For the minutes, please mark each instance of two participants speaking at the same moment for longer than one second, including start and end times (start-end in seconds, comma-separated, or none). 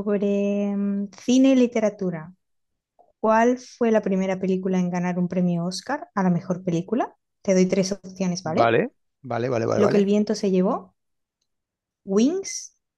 none